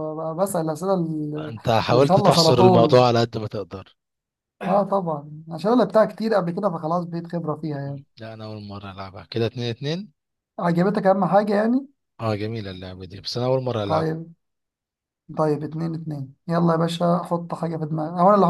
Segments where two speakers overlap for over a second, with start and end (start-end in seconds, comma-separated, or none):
1.4-3.0